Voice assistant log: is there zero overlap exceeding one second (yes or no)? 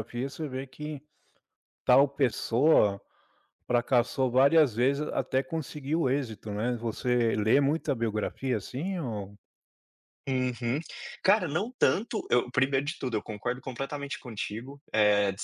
yes